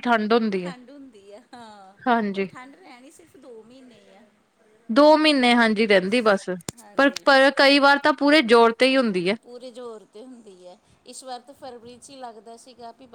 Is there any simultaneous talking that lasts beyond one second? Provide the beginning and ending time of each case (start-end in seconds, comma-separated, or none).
none